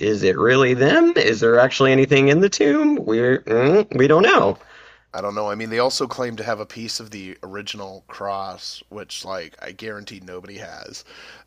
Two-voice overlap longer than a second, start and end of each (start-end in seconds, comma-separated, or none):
none